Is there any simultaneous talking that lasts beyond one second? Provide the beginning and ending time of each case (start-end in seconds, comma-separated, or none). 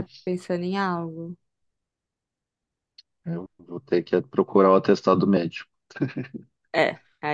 none